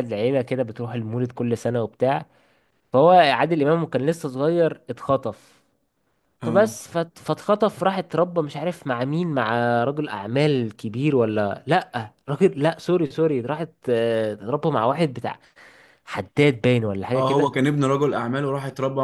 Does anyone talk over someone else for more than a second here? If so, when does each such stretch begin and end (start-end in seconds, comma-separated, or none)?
none